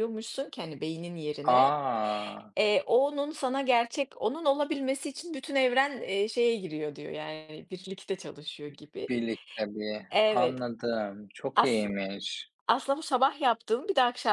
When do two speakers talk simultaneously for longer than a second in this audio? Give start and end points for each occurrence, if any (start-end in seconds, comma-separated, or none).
none